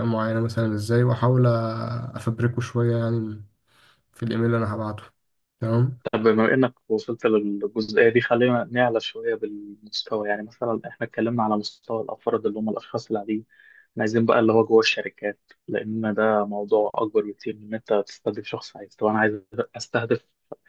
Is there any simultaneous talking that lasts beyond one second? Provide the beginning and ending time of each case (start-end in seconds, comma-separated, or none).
none